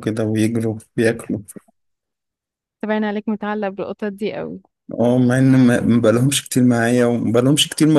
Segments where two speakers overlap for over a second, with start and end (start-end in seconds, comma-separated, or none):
none